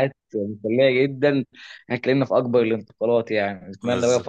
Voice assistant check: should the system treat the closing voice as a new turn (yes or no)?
no